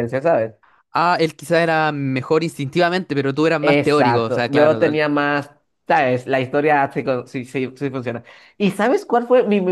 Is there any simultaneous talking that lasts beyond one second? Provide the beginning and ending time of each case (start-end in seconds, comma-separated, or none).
3.6-5.0